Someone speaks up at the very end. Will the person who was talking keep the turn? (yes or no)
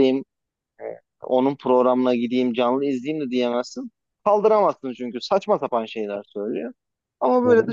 yes